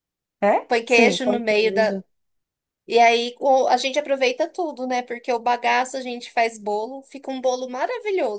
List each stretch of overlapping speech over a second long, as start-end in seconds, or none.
0.7-1.9